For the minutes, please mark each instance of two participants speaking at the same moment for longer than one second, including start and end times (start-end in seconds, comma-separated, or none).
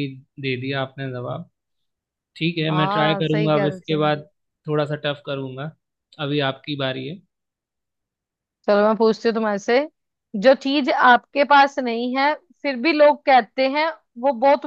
2.7-4.0